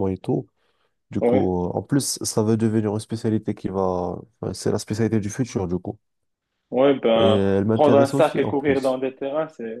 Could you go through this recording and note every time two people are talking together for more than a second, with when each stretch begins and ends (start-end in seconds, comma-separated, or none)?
7.2-9.0